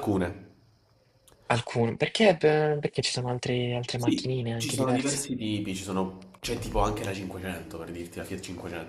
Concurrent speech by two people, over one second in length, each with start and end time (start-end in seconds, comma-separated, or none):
4.0-5.3